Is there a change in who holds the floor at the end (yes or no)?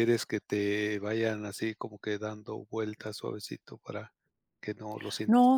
yes